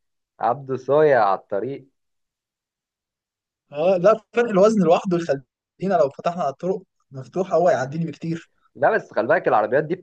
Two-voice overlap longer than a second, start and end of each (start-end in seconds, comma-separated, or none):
none